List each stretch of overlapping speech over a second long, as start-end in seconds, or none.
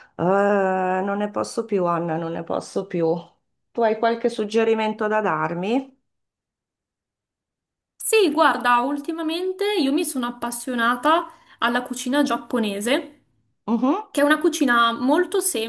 none